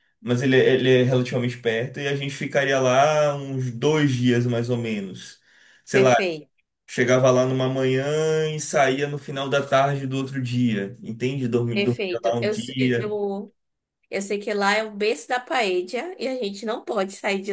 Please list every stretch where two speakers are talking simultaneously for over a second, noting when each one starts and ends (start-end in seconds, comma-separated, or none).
11.7-13.1